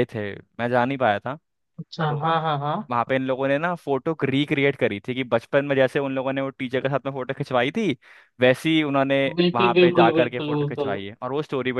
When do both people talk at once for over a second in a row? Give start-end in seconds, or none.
9.5-11.0